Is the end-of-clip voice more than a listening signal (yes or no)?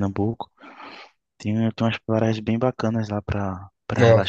yes